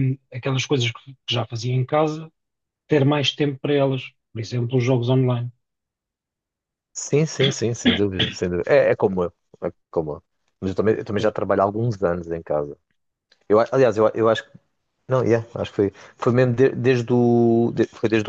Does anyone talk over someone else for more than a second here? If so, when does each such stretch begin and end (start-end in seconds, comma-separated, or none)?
none